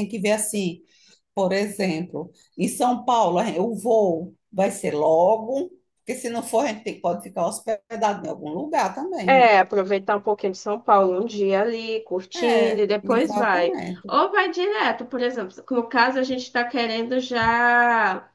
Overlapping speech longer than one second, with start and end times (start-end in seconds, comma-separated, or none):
12.3-14.1